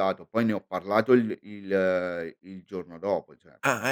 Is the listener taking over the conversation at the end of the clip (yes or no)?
yes